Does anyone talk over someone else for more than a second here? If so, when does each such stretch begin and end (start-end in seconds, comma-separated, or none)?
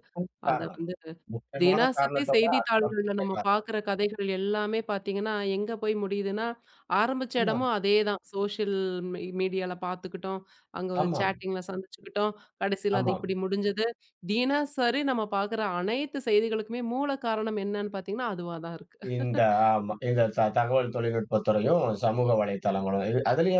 1.6-3.5